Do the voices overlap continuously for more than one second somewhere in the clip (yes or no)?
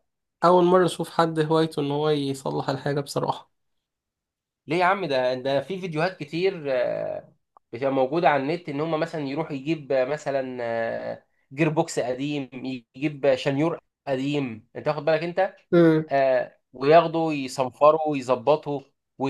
no